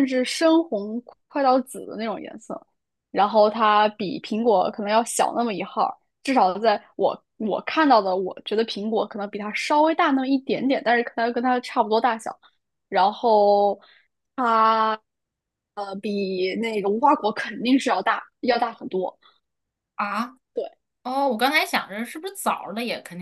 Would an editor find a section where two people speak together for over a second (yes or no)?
no